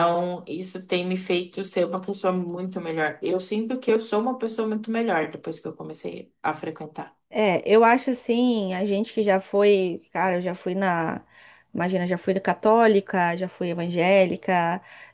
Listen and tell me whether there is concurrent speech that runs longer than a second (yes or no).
no